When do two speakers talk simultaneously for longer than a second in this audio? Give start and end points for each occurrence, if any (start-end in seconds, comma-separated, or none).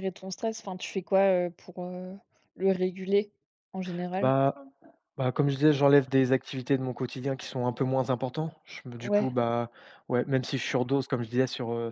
none